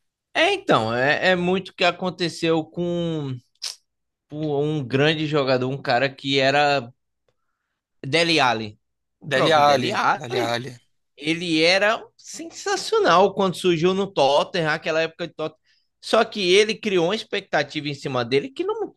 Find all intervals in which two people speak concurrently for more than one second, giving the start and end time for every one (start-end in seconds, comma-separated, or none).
9.2-10.6